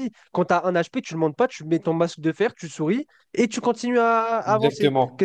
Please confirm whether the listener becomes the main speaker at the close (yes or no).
yes